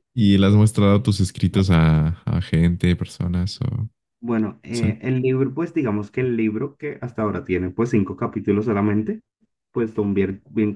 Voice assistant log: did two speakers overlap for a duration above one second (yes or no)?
no